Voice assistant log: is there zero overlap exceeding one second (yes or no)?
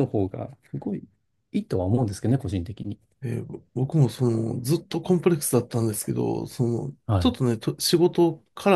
yes